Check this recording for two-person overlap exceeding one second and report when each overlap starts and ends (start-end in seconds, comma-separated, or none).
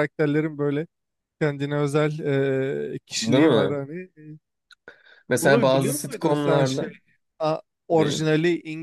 5.4-6.9